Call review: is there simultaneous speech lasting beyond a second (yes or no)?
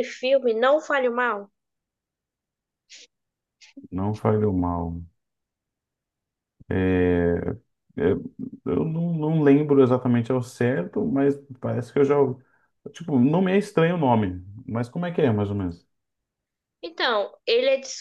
no